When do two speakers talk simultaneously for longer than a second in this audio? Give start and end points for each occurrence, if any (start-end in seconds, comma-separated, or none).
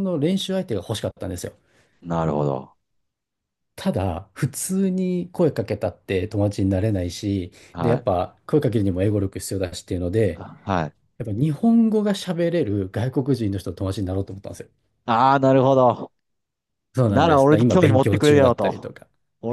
17.0-18.9